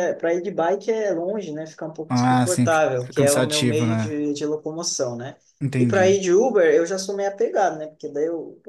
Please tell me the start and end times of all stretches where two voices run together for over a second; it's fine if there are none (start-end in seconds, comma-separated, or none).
2.1-4.2